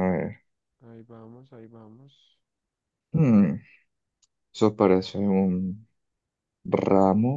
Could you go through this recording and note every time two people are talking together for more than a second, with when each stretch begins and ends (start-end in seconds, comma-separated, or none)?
none